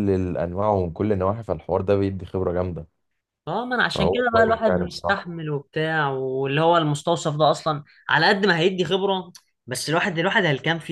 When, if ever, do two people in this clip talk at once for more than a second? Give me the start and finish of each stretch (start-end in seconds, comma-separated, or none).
3.9-5.2